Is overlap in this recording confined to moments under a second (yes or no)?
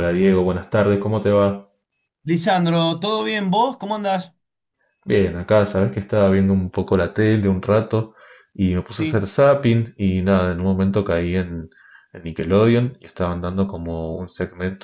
yes